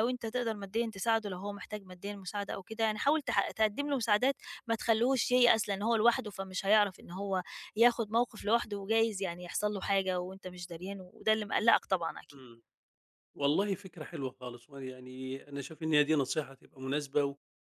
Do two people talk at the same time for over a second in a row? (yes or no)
no